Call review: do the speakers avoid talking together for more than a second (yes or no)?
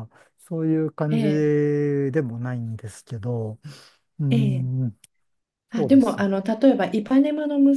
yes